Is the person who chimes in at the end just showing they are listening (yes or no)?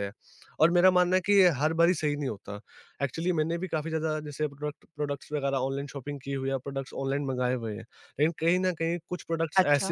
yes